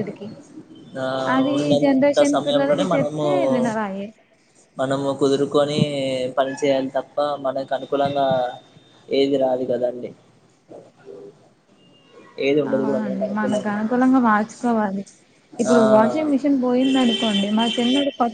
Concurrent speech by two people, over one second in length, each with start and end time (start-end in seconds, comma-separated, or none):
1.8-3.2